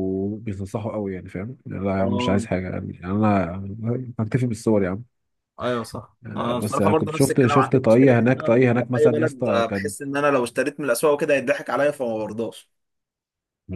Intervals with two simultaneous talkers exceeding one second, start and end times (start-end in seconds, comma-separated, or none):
6.2-9.9